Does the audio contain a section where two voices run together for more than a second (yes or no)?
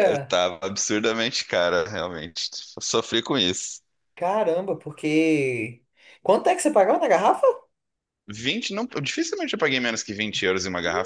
no